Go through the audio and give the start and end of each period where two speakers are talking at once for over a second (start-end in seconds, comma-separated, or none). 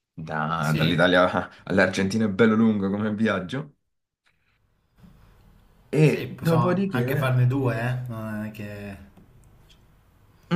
6.0-7.3